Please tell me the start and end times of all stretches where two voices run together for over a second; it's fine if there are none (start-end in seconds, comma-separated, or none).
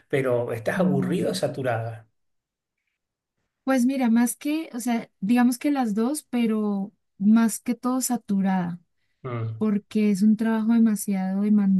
none